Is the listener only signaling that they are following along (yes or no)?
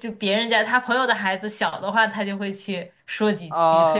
no